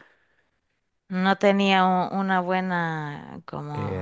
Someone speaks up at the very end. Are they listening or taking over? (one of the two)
taking over